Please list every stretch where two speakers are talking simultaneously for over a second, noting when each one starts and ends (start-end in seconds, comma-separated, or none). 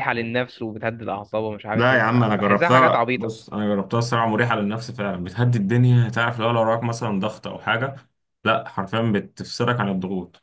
1.7-3.3